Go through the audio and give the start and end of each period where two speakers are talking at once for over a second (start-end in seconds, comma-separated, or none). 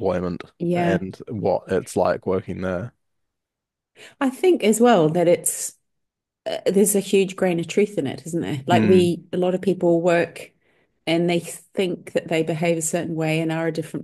none